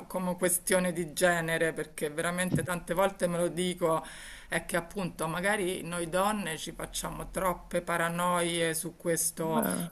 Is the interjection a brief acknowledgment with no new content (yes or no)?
yes